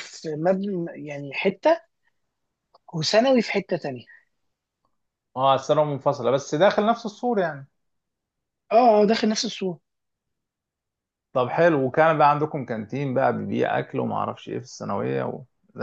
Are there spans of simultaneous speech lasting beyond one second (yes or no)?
no